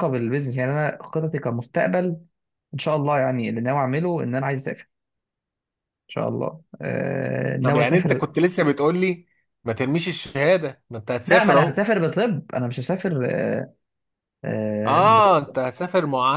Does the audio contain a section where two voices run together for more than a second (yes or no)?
no